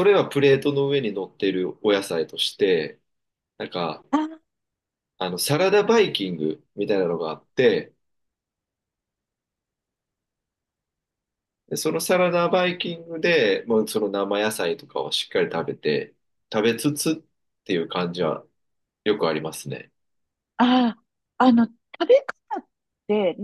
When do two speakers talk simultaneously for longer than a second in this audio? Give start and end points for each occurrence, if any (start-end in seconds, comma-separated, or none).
none